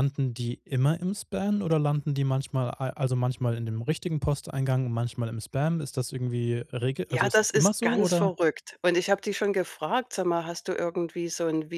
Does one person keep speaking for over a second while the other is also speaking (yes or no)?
yes